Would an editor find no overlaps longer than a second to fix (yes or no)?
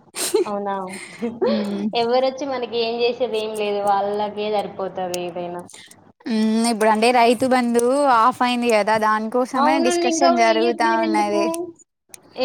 no